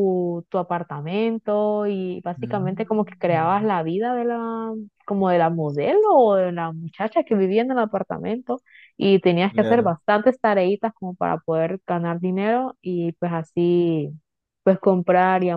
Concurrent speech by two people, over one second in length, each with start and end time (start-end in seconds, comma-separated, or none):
2.4-3.7